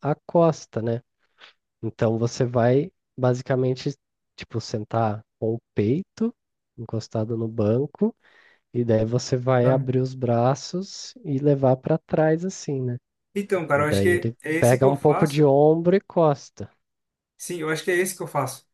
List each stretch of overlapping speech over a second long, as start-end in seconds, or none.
13.7-15.4